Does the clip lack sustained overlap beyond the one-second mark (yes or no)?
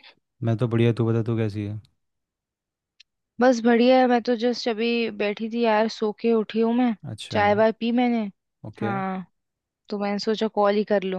yes